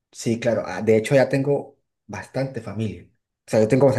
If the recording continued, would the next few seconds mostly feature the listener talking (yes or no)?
no